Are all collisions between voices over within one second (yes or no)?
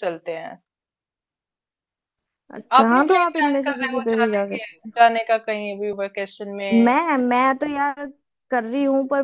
no